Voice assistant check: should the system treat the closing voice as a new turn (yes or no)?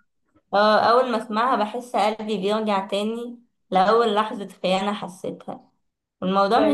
no